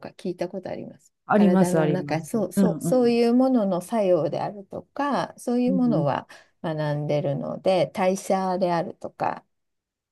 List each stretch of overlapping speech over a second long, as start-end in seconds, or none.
1.2-3.2